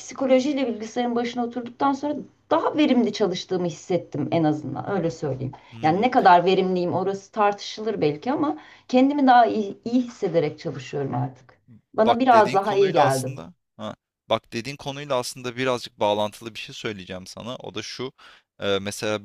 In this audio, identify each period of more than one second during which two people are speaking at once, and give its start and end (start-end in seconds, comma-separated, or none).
12.1-13.3